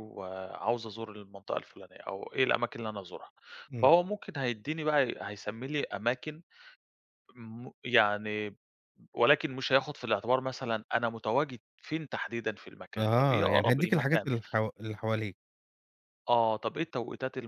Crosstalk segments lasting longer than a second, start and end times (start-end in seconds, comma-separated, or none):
13.0-14.3